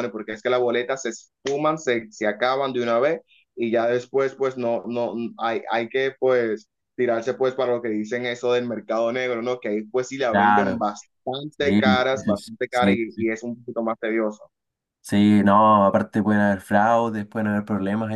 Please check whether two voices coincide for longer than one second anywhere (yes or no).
yes